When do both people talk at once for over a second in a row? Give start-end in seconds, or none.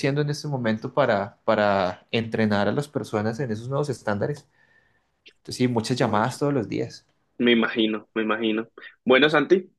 none